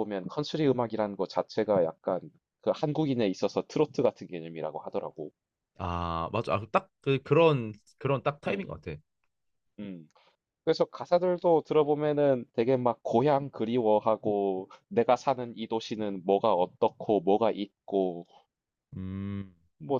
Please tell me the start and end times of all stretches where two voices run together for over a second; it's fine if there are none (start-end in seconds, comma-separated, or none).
none